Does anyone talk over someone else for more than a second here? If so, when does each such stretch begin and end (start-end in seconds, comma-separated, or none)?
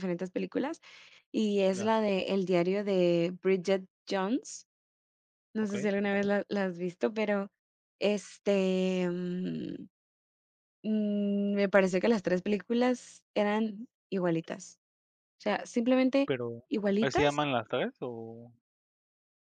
none